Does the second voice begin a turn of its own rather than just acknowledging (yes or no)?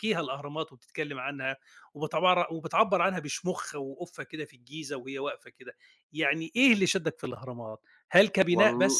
no